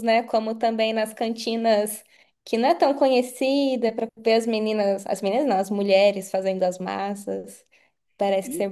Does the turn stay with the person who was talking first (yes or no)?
no